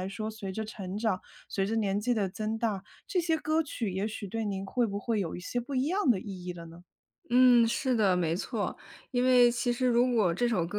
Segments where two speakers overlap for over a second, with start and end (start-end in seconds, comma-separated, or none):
none